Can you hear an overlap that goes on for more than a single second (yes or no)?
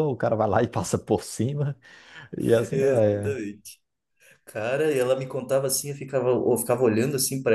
no